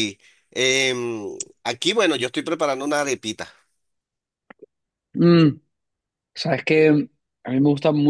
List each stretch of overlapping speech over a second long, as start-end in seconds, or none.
none